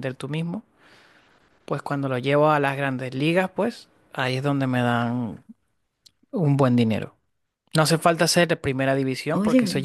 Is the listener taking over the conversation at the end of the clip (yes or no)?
no